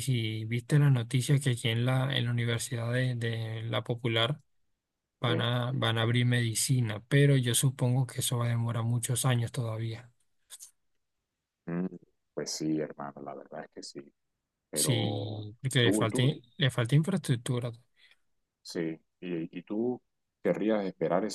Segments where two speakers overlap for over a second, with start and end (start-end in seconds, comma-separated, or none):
14.7-16.3